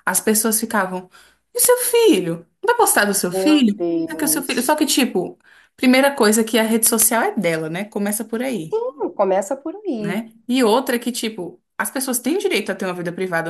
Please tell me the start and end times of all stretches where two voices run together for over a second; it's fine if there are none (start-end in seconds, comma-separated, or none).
3.3-4.7